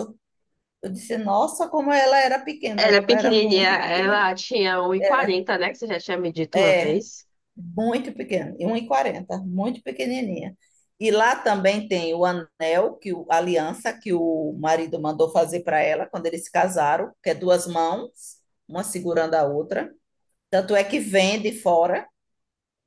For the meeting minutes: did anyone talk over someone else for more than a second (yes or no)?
yes